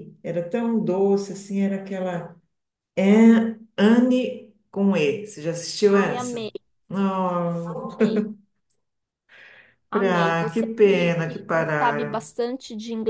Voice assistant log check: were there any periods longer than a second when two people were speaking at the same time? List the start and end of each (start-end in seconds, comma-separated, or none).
9.9-12.3